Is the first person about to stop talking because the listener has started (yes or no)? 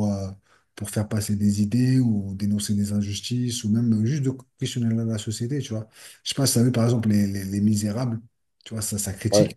no